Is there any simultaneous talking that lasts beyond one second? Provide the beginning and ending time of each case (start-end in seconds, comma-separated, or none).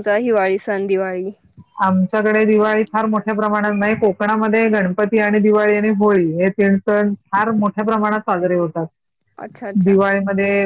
none